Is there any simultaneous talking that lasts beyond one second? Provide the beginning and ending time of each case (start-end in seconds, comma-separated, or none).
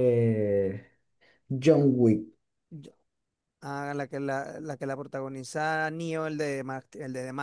none